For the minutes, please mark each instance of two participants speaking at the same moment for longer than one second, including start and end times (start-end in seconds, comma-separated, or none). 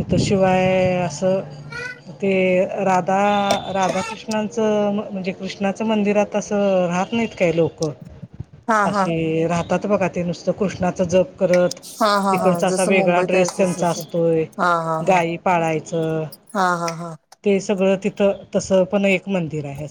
12.3-14.0